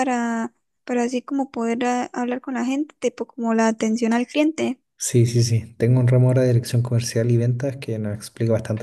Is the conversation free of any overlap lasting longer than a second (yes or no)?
yes